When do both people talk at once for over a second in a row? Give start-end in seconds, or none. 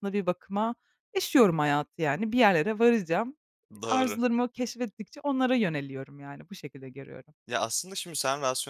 none